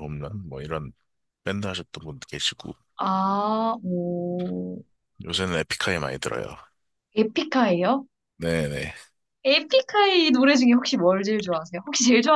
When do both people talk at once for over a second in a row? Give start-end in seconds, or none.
none